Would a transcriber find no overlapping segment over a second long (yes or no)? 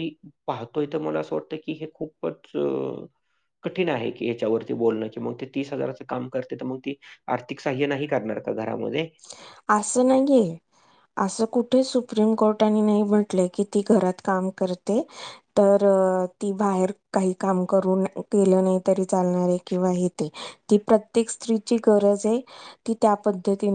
yes